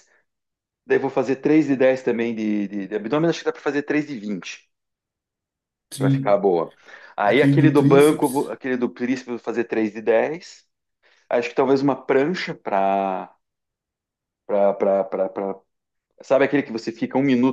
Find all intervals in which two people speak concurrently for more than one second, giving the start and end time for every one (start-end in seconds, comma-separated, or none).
7.2-8.5